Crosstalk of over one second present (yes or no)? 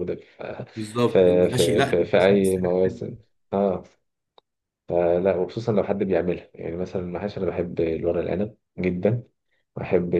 yes